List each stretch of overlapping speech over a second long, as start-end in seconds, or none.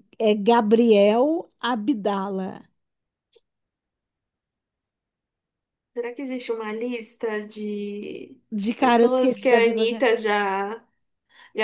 8.8-10.0